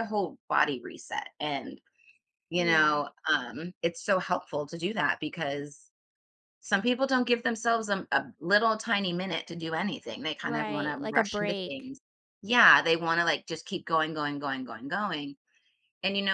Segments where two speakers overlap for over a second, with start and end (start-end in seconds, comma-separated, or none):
10.4-11.9